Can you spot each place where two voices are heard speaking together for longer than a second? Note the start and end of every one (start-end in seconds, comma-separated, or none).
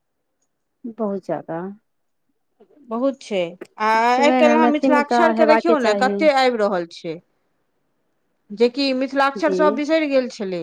4.2-6.2